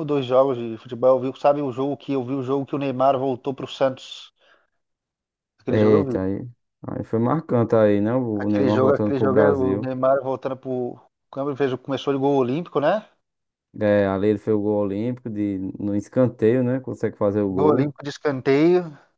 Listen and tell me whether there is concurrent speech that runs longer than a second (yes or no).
yes